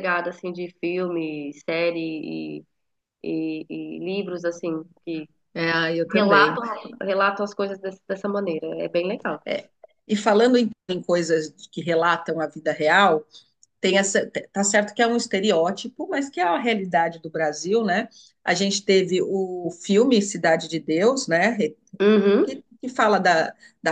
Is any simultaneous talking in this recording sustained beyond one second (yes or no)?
no